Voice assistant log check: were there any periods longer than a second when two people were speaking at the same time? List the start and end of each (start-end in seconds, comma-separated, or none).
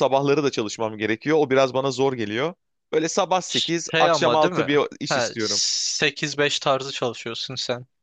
3.9-5.6